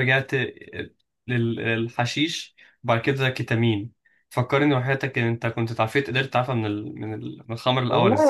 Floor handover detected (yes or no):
yes